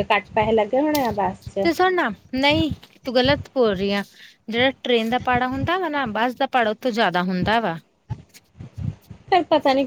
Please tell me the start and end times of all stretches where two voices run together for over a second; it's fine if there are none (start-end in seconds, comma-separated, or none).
none